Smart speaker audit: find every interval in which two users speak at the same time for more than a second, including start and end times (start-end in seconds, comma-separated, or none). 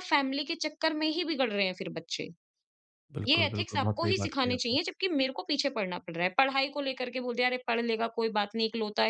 3.3-4.8